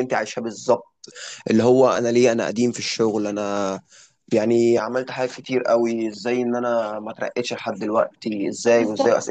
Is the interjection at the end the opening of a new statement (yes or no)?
no